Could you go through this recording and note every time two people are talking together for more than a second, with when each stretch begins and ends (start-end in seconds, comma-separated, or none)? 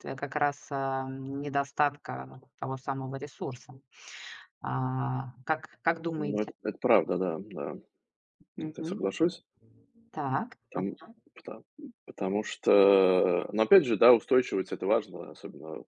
none